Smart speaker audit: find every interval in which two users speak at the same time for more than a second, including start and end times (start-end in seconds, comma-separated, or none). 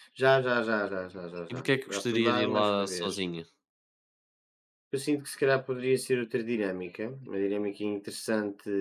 1.5-3.3